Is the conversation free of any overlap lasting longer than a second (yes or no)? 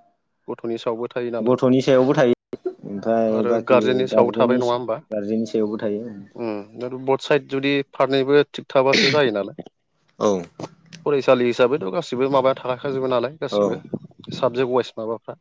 yes